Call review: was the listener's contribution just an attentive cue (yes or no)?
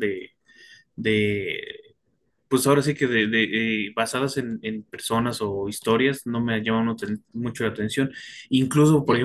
yes